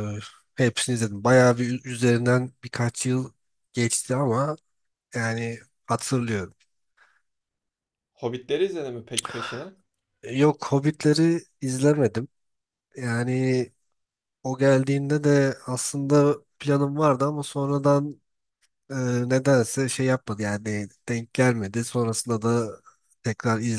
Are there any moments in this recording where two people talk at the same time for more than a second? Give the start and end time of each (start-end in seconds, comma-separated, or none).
none